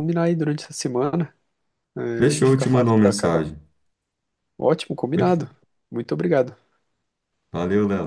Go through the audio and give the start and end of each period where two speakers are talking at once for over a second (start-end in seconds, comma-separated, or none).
2.1-3.5